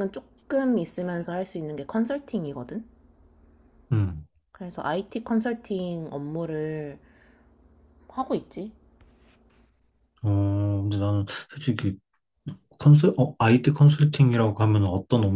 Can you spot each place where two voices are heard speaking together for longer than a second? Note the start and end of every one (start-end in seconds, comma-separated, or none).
none